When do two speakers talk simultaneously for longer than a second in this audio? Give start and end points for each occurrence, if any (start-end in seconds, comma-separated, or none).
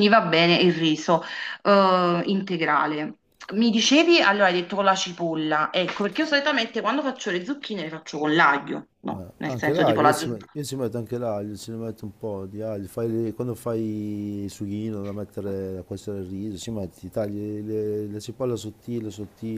9.1-10.4